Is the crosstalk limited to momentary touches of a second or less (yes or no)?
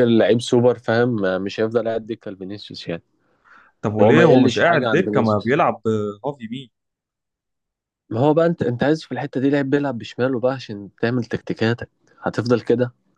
no